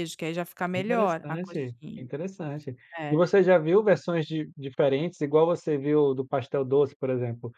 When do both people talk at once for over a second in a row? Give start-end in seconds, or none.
0.7-2.1